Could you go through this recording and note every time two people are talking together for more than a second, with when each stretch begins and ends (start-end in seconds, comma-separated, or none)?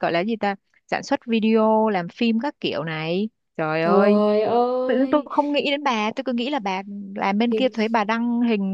none